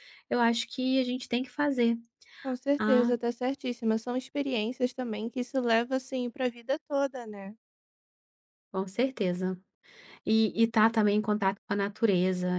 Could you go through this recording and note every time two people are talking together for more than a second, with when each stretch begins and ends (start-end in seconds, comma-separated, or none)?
none